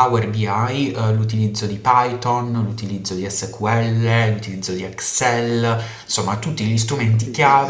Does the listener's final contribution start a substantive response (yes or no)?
no